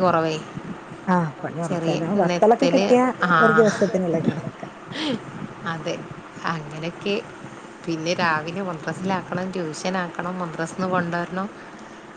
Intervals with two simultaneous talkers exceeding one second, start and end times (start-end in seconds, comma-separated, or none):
none